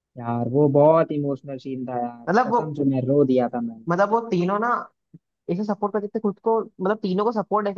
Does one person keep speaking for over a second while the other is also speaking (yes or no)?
no